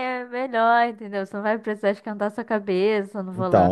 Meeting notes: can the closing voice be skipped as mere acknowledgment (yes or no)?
no